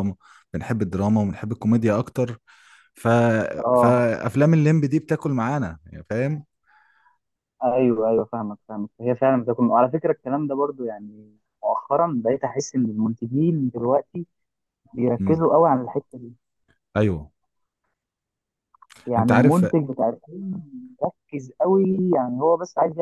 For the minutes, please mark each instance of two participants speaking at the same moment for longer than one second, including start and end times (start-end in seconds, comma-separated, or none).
none